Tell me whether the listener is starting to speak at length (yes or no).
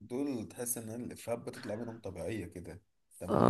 yes